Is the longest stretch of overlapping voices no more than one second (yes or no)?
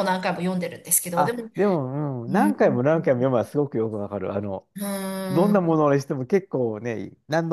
yes